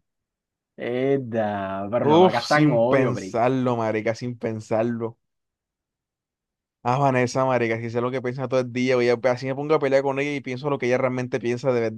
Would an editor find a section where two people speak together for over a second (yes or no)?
yes